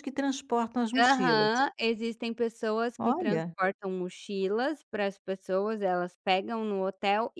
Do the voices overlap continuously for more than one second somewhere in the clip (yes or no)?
no